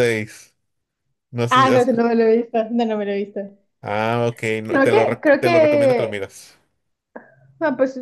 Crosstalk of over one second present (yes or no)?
yes